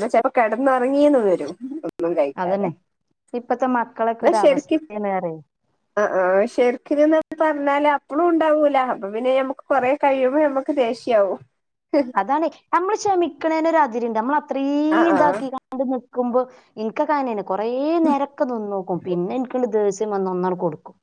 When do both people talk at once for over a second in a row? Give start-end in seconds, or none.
none